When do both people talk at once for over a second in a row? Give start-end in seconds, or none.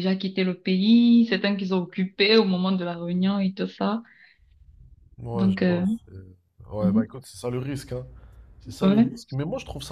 none